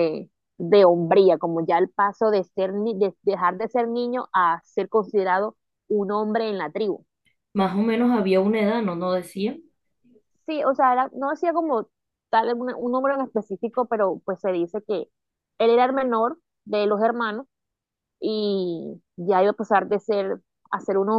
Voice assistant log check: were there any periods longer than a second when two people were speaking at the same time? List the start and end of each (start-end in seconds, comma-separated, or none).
none